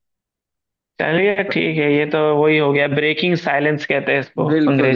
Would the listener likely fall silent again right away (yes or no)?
no